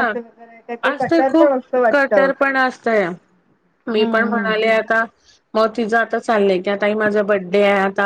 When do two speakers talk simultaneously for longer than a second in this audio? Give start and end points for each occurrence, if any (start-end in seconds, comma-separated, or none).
0.9-2.3